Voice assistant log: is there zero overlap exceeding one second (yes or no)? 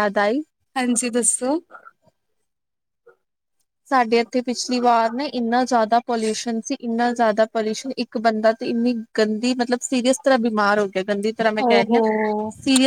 yes